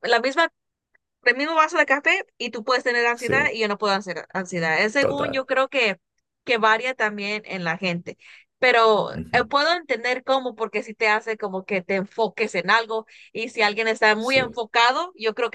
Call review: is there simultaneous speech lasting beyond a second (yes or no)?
no